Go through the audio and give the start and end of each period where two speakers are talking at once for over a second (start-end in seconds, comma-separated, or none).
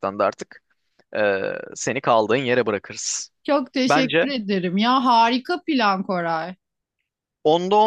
none